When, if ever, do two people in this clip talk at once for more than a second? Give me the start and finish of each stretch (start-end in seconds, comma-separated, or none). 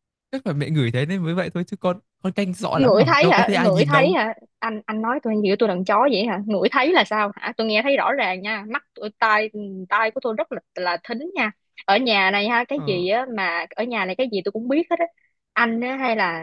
2.7-4.2